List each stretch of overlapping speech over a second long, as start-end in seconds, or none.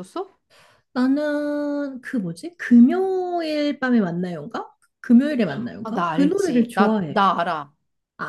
5.8-7.2